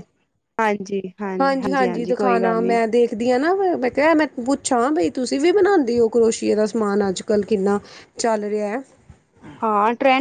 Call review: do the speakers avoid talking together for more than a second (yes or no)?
no